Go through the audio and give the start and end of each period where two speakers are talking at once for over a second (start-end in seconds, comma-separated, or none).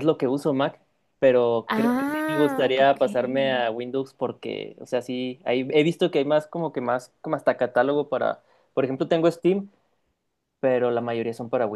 1.7-3.6